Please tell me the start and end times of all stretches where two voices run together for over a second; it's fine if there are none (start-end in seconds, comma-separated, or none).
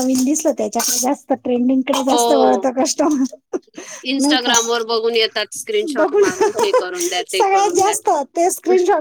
6.0-8.0